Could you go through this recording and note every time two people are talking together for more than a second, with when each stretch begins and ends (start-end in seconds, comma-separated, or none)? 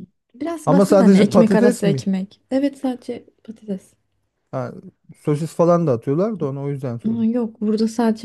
0.6-2.1